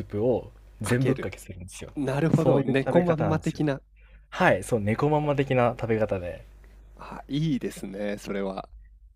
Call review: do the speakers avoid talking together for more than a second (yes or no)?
no